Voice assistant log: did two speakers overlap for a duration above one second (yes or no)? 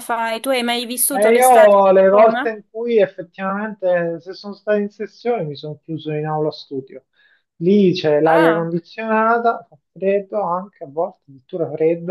yes